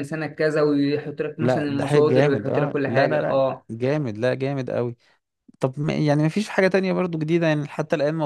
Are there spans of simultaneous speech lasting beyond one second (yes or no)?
yes